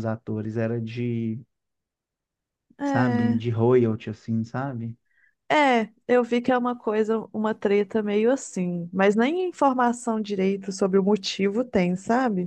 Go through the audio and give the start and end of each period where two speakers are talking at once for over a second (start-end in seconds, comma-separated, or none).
none